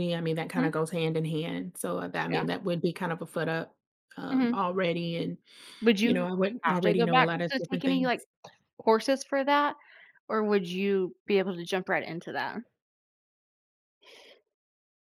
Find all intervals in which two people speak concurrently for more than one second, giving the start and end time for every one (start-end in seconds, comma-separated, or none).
6.0-8.1